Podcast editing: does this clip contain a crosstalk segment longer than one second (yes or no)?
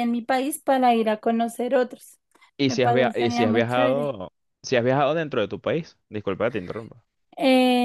yes